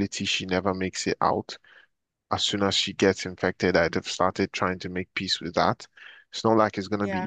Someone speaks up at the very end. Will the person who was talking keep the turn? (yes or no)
yes